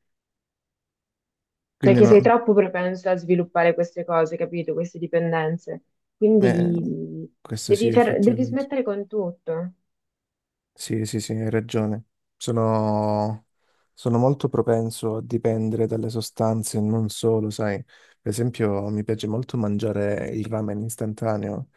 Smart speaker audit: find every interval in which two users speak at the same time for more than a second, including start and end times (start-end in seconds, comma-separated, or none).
7.4-8.7